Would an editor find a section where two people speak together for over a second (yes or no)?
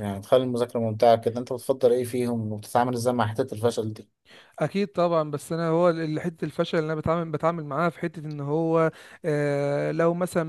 no